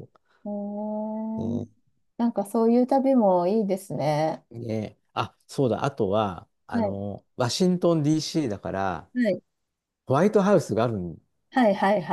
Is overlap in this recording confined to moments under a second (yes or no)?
yes